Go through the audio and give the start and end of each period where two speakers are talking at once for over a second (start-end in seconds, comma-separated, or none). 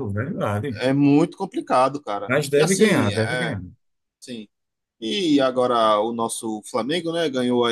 2.3-3.6